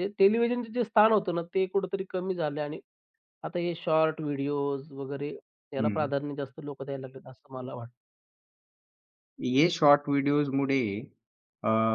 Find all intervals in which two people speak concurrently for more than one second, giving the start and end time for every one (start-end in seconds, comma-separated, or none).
none